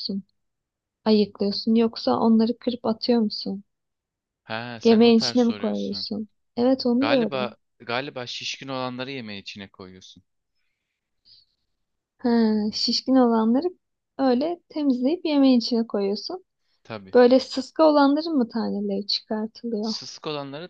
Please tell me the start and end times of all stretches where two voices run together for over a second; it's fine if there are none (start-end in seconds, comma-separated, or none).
4.8-6.1